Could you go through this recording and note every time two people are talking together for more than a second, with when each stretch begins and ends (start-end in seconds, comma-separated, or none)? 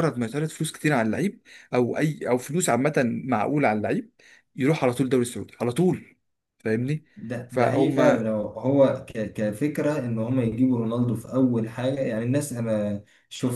none